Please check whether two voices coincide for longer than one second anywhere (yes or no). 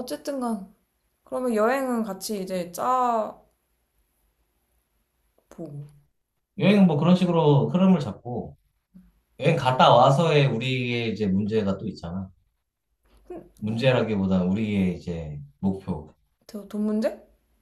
no